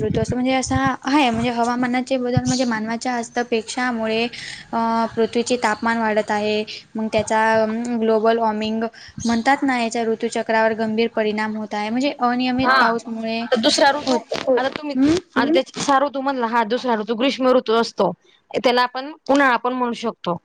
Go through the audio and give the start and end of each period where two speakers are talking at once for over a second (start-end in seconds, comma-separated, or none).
none